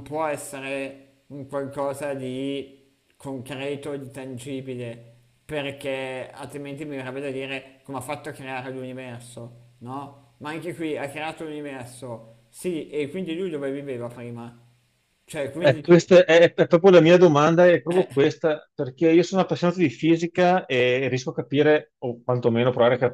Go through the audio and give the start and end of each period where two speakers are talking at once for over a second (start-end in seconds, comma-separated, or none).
none